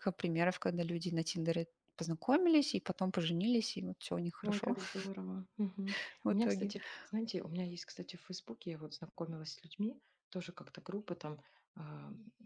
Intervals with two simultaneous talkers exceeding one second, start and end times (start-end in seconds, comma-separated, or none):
none